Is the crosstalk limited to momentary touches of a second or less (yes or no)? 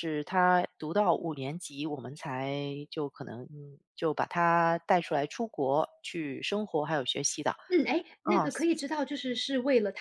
yes